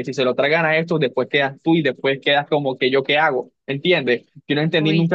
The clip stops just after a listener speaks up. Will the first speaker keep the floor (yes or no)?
yes